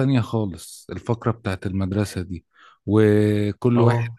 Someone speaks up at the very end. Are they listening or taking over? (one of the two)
listening